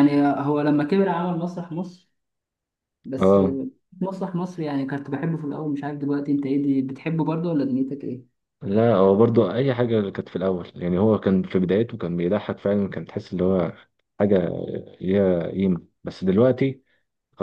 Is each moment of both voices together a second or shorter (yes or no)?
yes